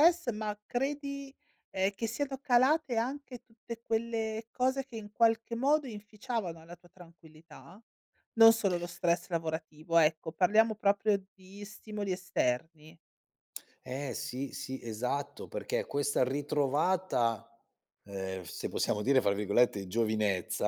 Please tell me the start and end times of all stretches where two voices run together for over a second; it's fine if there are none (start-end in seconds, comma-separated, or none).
none